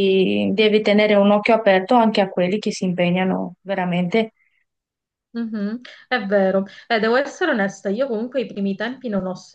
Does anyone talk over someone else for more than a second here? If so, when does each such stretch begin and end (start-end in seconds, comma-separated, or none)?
none